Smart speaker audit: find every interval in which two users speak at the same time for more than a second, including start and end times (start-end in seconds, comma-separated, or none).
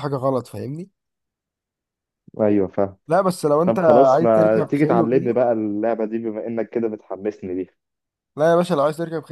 3.6-5.4